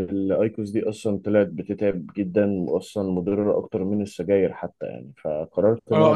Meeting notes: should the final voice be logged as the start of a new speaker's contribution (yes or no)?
yes